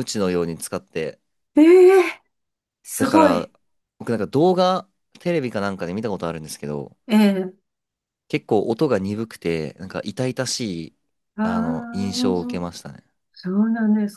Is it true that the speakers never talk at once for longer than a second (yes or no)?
no